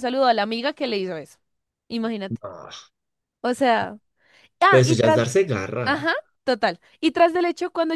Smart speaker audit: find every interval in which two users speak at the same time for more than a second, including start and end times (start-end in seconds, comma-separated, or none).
none